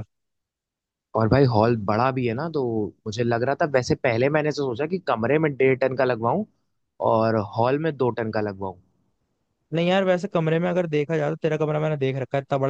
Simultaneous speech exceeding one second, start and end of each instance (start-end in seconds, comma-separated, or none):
none